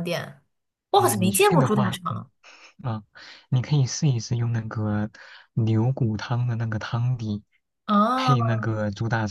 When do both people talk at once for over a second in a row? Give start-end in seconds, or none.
0.9-2.3